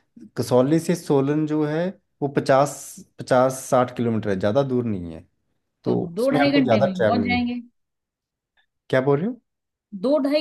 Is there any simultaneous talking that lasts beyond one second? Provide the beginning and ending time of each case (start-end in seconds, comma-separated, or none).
5.9-7.5